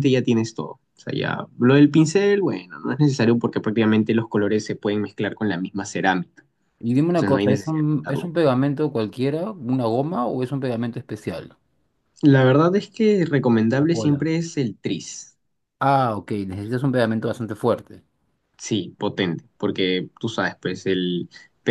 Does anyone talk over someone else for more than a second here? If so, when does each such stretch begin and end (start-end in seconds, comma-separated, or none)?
7.0-8.3